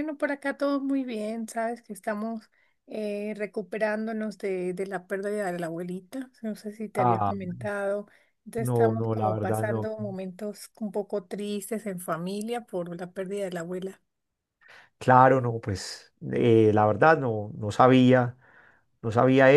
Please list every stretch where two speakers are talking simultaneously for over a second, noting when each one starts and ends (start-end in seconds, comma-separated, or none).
8.6-9.9